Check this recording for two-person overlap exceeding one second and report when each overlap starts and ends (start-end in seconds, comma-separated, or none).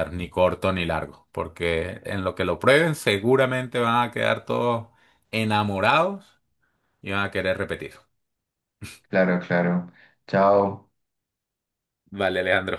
none